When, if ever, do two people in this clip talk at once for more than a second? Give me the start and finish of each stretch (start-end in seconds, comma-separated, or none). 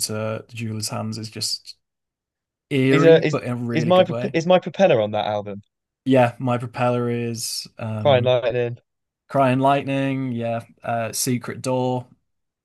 2.9-4.4